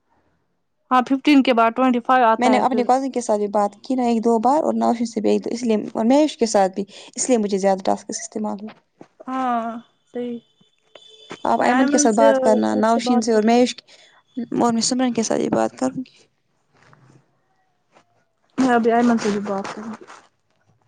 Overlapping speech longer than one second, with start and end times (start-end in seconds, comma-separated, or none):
11.6-13.6